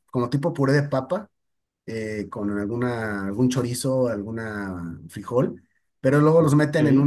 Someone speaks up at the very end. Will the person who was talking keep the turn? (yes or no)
yes